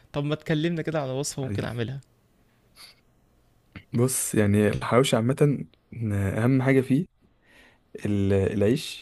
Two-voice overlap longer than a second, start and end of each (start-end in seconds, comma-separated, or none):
none